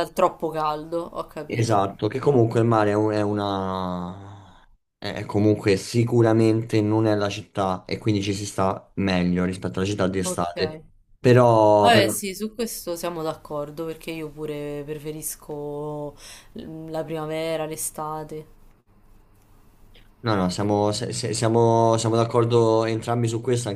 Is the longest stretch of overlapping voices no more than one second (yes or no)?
yes